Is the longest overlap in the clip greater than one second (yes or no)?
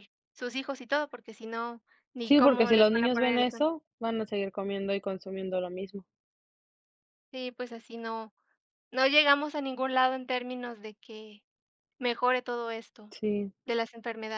yes